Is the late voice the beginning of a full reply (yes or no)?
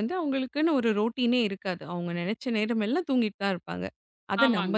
no